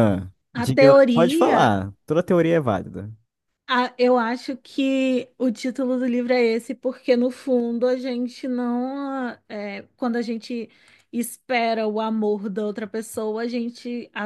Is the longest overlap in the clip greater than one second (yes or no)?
yes